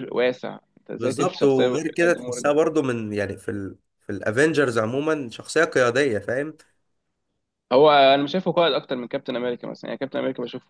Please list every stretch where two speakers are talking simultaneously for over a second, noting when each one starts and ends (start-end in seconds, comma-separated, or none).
1.0-2.5